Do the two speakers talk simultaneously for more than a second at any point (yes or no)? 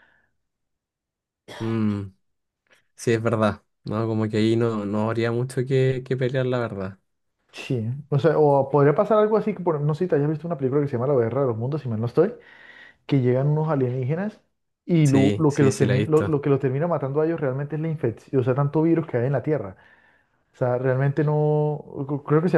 yes